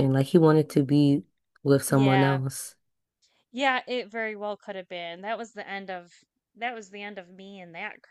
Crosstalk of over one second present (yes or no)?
no